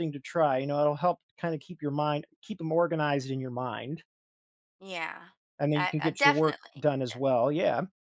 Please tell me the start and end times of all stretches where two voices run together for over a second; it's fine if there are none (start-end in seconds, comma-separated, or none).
5.7-7.4